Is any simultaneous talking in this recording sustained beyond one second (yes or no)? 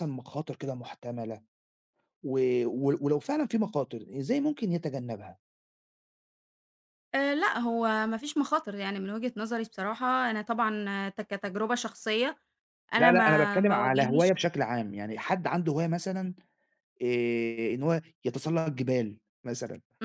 yes